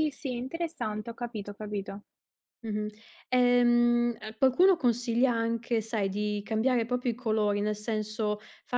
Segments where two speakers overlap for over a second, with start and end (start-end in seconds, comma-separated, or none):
none